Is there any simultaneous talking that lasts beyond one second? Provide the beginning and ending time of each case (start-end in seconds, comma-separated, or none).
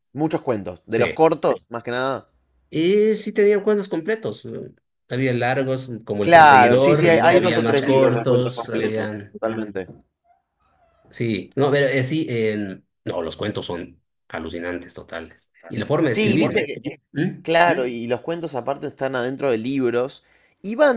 6.2-9.4